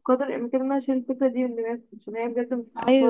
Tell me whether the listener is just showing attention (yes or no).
no